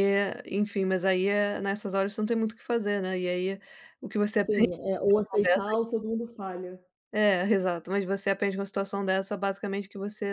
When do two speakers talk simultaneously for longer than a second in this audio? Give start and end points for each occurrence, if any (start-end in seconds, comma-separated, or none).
4.3-5.9